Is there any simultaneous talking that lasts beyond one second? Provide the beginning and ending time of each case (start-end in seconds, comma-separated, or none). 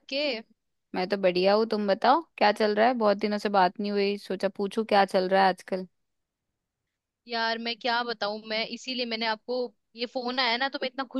none